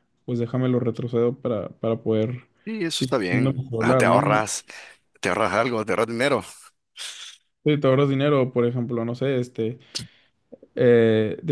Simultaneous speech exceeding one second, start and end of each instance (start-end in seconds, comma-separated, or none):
2.9-4.2